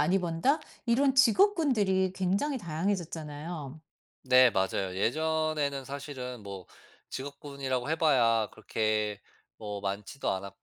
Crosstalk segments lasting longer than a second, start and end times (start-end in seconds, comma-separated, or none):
none